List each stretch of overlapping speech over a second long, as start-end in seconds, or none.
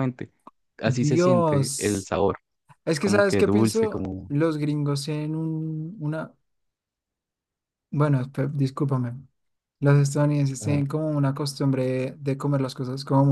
0.8-2.1, 3.0-4.3